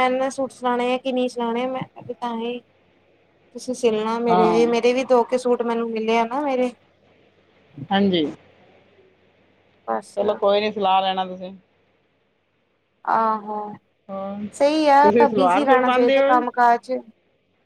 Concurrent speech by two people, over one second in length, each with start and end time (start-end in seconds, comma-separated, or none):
15.0-16.2